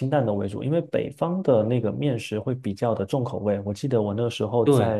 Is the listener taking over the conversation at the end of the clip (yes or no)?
no